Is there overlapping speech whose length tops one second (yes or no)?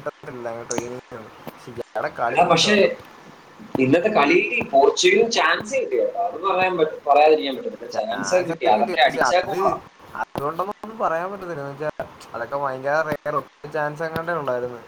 yes